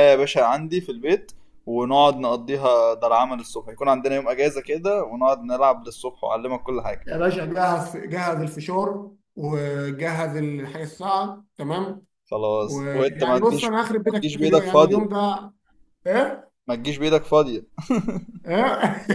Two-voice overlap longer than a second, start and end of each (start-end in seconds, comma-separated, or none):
12.6-15.1